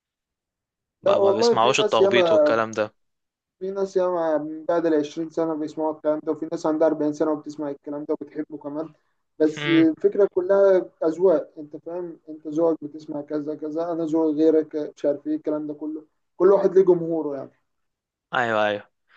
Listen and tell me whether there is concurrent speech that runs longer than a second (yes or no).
yes